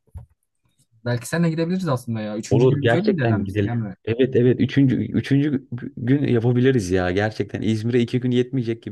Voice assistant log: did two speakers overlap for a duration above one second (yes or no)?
yes